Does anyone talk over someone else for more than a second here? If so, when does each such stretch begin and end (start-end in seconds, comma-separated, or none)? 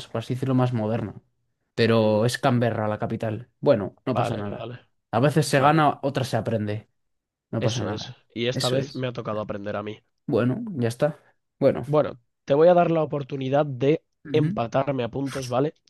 7.6-9.1